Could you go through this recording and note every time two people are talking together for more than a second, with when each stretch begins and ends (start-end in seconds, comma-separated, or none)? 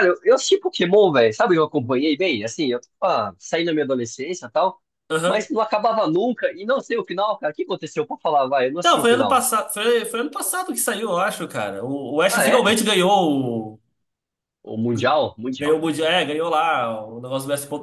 none